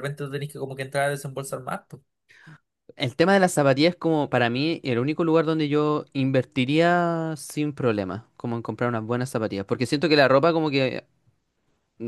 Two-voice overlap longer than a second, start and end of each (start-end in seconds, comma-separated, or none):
none